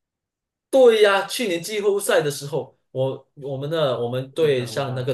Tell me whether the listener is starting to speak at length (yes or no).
no